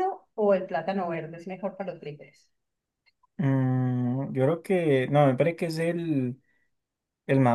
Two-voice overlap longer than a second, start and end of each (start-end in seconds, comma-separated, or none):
none